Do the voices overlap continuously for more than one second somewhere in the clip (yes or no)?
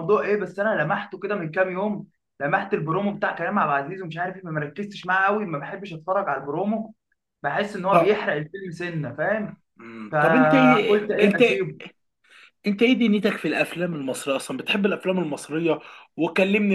yes